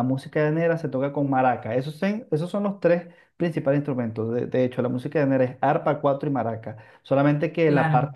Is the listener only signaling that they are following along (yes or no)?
yes